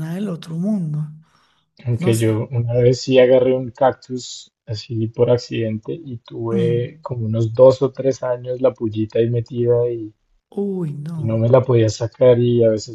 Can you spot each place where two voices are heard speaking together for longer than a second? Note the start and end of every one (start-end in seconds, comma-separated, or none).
none